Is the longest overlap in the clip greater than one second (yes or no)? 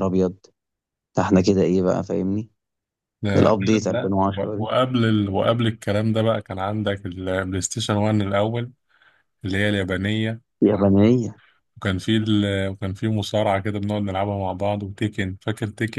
yes